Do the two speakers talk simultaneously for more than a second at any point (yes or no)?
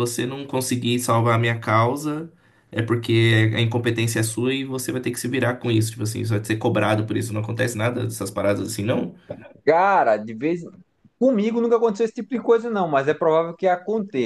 no